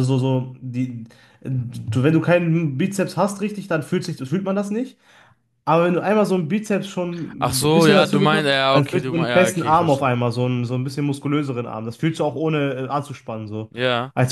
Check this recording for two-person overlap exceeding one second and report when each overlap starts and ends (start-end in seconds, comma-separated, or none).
7.4-10.1